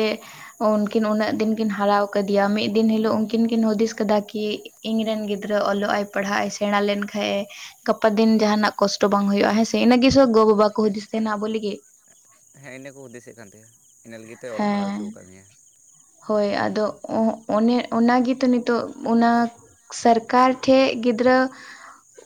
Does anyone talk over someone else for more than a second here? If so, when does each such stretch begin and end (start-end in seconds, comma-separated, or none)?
8.4-10.3